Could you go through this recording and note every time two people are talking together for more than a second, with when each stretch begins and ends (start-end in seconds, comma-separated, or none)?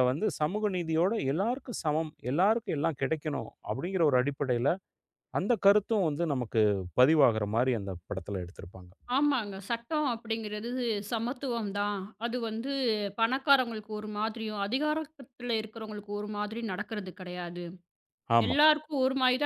none